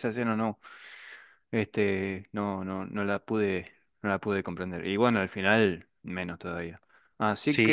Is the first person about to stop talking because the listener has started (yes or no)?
yes